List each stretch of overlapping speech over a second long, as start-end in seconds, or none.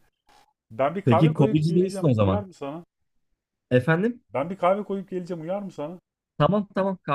1.1-2.4